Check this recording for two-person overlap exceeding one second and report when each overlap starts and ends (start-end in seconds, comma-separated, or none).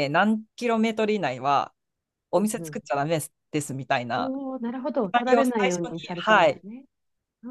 5.0-6.6